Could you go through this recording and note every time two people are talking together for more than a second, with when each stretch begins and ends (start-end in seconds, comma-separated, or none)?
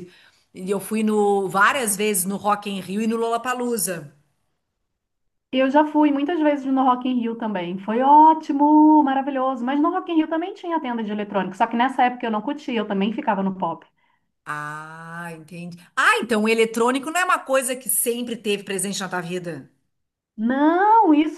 none